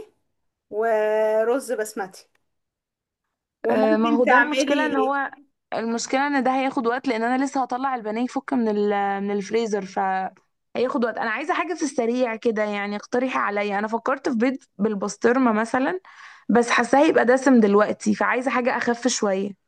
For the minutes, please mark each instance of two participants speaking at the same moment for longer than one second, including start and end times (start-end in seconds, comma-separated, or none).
3.7-5.1